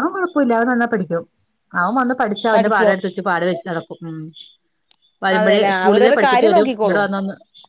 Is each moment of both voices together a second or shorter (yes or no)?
no